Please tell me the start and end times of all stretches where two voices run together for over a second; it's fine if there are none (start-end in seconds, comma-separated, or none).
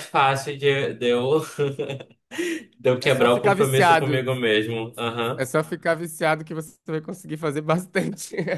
3.0-4.3